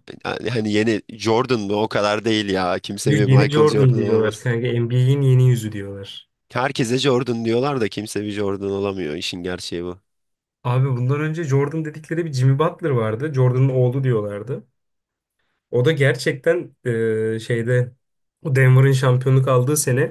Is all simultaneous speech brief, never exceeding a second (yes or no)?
no